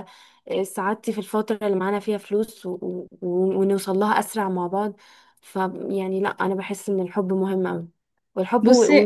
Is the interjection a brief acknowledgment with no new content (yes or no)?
yes